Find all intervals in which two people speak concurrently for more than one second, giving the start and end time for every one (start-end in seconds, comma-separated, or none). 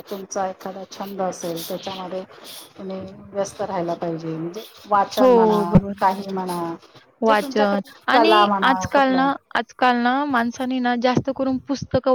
7.3-9.3